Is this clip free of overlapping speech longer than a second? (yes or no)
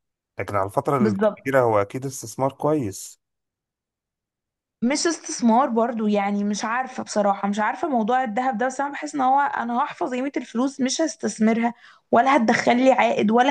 yes